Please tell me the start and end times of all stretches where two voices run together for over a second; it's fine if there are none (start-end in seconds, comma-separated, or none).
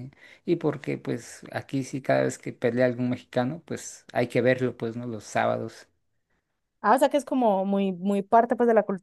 none